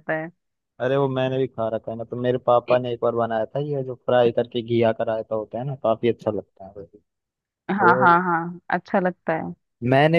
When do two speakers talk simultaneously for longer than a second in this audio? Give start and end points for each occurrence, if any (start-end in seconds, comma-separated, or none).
none